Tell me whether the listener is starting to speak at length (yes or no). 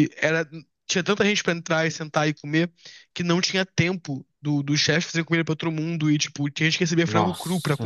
yes